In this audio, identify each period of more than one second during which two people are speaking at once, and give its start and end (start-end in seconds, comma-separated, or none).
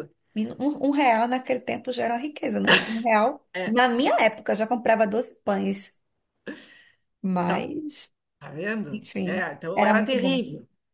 8.9-10.4